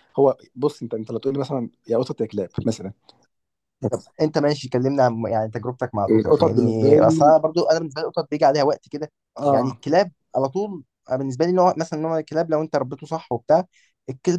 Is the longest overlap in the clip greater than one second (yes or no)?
yes